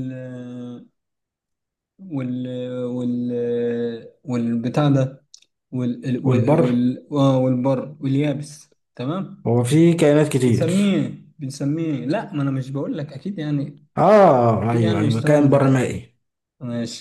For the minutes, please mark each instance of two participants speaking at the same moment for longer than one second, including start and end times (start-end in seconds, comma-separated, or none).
14.7-15.9